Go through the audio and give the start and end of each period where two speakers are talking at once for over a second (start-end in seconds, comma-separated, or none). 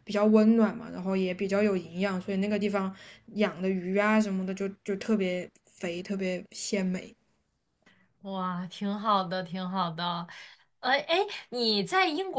none